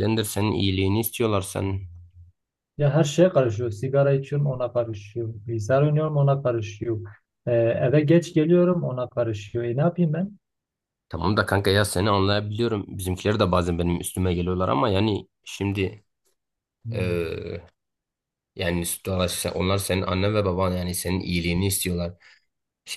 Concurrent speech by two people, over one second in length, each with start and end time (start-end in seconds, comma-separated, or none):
none